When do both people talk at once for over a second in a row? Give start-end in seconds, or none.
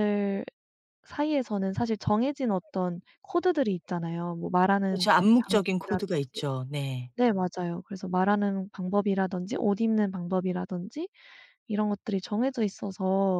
4.9-6.4